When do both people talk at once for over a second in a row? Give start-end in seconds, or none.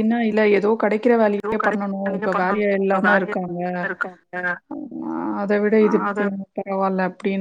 1.4-3.4